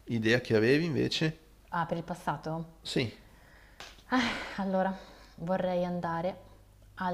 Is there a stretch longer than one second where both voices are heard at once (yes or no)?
no